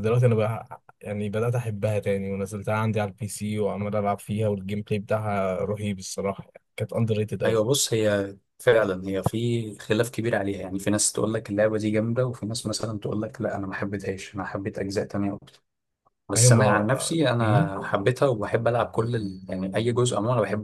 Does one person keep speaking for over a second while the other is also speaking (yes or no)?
yes